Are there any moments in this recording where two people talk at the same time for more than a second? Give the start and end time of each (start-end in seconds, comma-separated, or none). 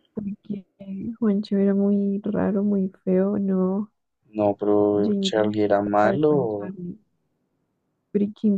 5.0-6.7